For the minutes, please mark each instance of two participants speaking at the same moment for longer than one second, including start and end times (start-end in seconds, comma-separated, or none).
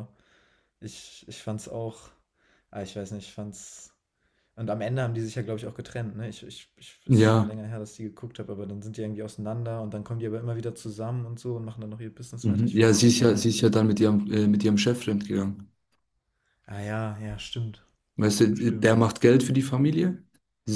12.4-13.7